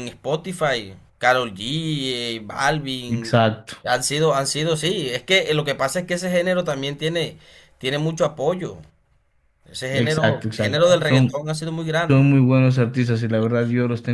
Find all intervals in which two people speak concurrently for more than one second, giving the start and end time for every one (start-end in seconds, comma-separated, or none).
9.9-11.4